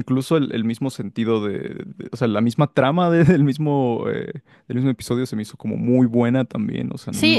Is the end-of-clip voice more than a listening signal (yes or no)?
yes